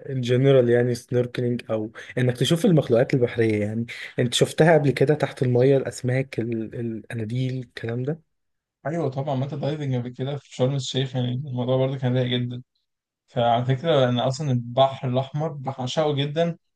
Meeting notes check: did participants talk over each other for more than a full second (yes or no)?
no